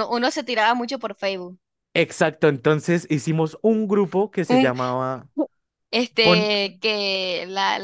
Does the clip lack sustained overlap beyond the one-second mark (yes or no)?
yes